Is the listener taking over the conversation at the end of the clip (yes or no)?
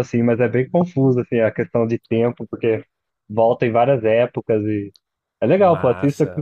yes